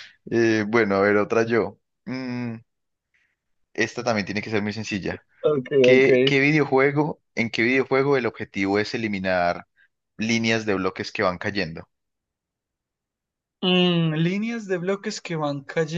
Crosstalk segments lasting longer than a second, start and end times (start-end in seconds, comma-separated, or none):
none